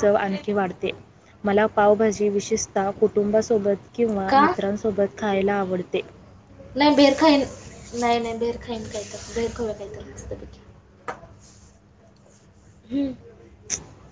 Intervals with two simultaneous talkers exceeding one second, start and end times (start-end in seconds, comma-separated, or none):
none